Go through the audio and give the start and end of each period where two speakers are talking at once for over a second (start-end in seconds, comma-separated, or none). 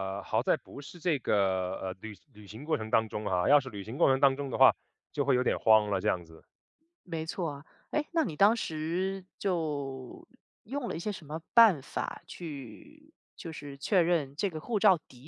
none